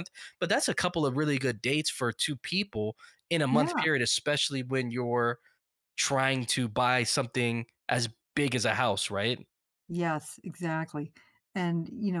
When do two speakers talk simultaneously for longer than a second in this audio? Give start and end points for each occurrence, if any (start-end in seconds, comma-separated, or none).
none